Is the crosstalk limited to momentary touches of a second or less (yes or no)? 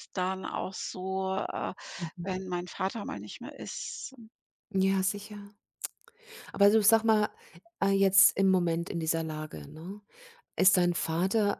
yes